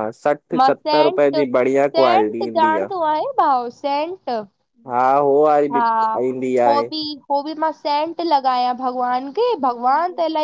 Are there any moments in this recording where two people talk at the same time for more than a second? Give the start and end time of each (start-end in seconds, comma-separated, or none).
0.6-2.9